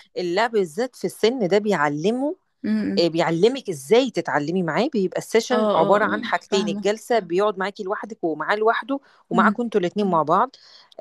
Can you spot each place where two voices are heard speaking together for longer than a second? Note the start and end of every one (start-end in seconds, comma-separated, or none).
5.5-6.9